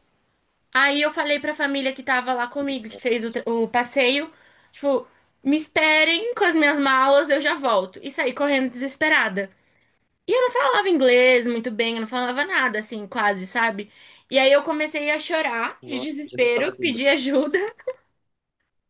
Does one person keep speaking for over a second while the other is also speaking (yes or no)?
yes